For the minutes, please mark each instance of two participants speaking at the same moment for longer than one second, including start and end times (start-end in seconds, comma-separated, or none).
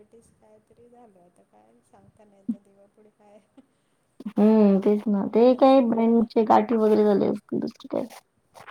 none